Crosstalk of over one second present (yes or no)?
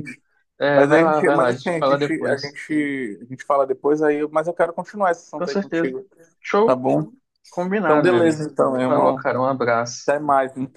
yes